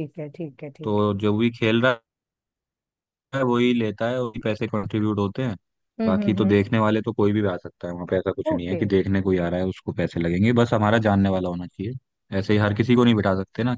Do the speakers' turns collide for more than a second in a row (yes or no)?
no